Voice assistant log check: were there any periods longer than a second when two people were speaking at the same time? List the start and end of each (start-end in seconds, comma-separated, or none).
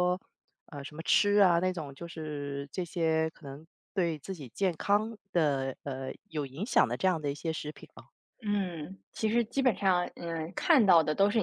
none